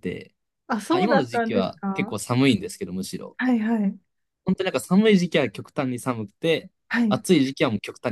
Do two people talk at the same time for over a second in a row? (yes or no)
yes